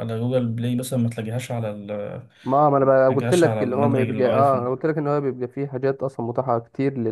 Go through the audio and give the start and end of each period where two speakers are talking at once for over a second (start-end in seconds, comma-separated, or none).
2.9-4.8